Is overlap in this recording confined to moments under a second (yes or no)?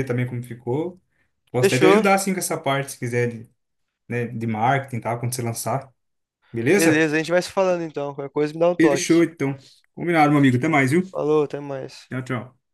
yes